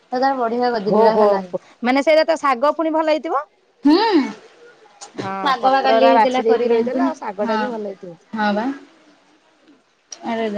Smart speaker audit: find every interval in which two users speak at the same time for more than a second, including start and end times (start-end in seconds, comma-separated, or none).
5.4-7.6